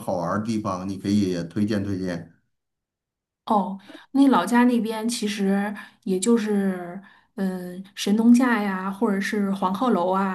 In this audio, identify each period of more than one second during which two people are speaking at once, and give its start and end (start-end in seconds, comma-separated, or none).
none